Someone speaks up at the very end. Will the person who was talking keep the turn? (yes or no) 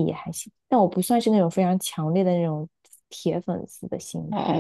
no